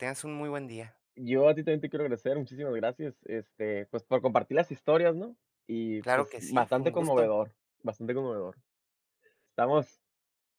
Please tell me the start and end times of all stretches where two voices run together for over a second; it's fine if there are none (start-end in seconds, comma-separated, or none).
6.0-7.3